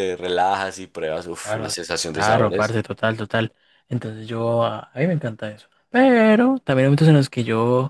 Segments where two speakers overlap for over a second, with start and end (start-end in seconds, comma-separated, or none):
1.4-2.8